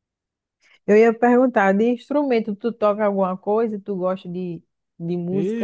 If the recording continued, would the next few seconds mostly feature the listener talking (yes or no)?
yes